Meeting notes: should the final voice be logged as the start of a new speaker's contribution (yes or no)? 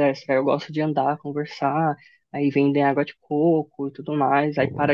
no